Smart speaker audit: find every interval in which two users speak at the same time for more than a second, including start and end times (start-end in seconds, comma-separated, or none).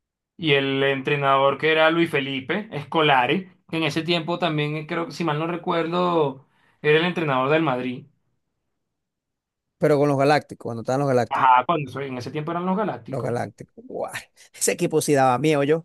none